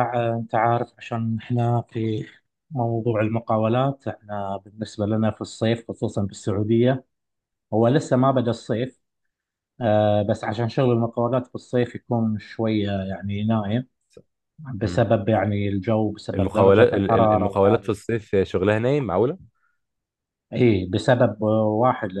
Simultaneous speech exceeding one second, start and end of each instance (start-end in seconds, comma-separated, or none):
16.3-18.0